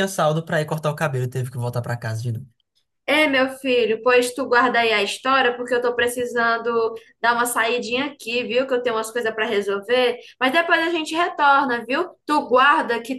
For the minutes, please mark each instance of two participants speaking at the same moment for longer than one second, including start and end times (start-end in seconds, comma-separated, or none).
none